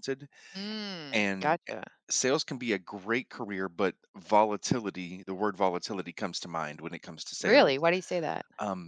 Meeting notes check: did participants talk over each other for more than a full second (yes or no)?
no